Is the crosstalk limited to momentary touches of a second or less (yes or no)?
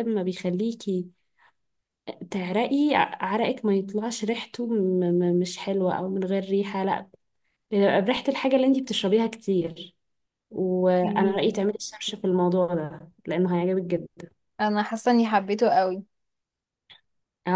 yes